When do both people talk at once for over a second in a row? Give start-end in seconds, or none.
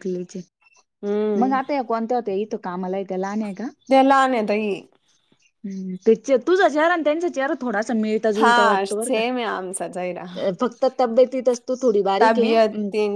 8.4-10.2